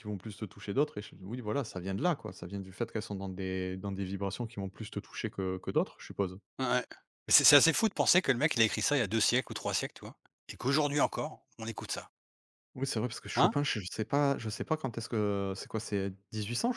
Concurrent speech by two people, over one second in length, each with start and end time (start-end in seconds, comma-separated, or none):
none